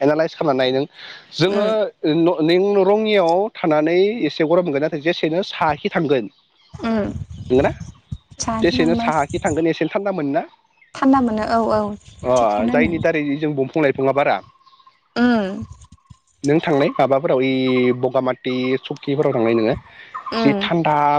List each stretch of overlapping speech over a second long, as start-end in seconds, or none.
none